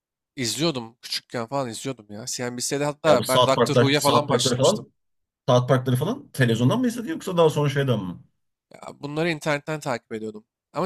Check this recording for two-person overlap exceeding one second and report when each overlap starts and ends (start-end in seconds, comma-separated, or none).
3.0-4.8